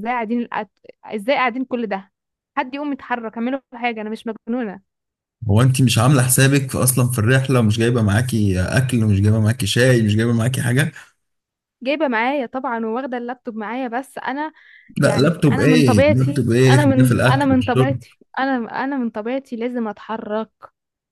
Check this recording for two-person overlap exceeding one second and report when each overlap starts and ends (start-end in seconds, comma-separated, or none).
15.0-18.0